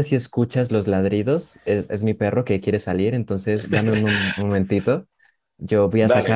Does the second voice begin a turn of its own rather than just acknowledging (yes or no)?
no